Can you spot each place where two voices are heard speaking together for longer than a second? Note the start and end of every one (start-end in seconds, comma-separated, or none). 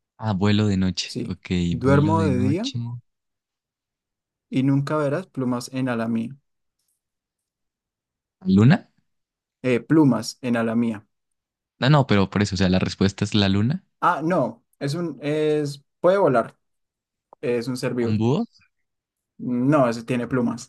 1.0-2.7